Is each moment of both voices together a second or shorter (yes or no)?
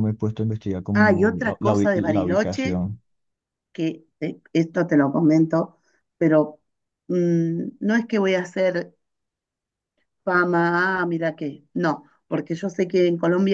no